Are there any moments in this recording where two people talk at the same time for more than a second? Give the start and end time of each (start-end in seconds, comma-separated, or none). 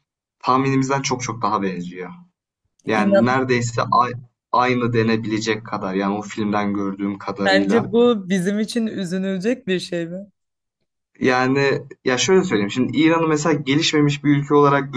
none